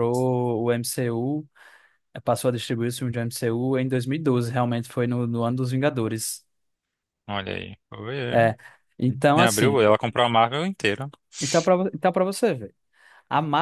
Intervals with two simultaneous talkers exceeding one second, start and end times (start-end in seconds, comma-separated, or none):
none